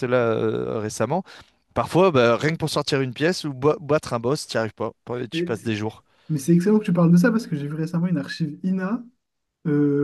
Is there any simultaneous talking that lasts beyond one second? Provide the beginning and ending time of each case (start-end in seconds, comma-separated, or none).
none